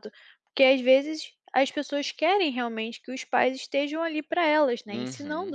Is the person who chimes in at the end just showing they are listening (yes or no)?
yes